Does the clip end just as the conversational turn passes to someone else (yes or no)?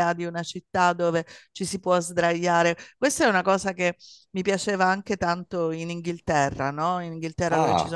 no